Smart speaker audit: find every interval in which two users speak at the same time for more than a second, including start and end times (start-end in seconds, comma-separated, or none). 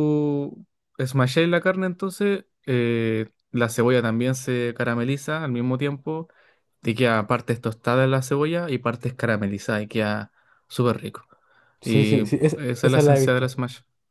11.8-13.5